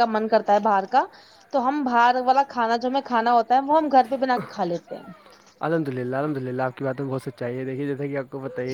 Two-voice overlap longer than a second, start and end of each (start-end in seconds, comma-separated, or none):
none